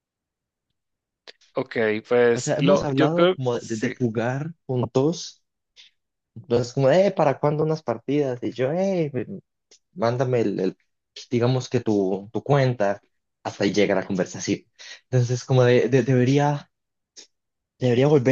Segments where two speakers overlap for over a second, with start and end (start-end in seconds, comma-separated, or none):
2.3-3.9